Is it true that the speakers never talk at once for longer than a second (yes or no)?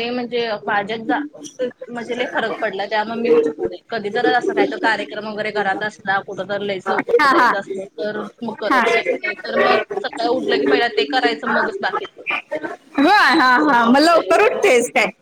yes